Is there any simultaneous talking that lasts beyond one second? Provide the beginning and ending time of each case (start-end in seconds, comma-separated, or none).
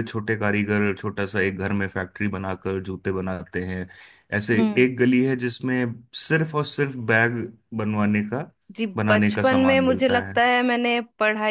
9.0-10.4